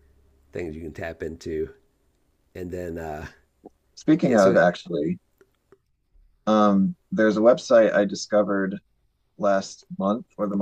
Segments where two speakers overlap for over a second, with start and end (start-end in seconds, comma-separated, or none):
none